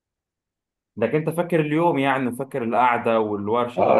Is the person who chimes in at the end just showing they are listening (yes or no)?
no